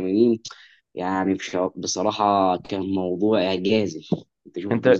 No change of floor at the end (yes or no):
no